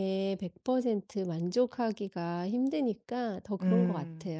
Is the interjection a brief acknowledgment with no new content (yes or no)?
no